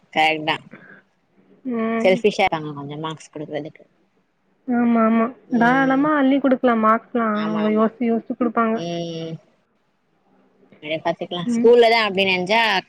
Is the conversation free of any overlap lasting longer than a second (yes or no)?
yes